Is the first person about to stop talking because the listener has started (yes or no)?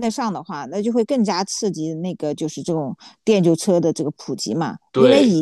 no